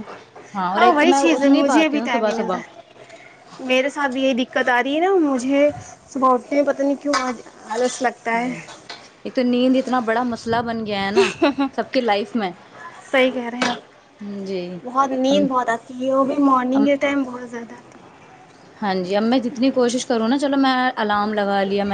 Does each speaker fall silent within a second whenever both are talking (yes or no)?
no